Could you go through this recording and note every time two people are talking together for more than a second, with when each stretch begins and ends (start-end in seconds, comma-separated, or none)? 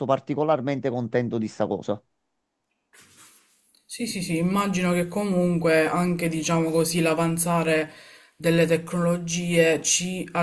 none